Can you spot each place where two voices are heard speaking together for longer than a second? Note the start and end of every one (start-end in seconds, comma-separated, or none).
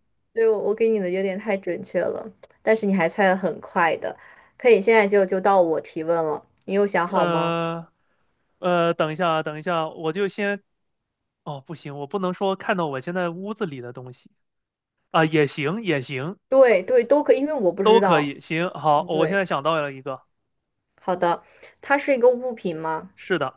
none